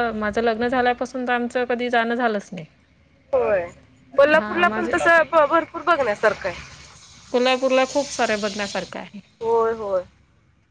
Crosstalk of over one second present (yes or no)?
no